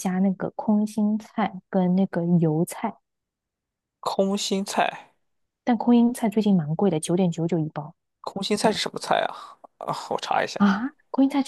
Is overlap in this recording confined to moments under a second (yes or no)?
yes